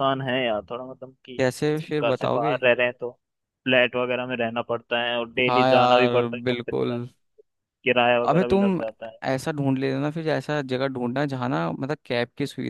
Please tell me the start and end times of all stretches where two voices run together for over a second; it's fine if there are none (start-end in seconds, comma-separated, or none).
5.5-7.0